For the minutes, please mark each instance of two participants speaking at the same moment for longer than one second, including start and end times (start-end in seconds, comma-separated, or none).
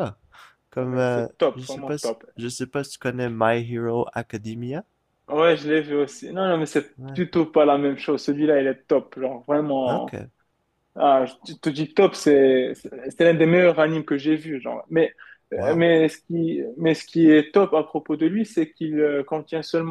0.8-2.2